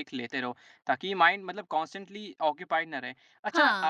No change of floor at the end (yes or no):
yes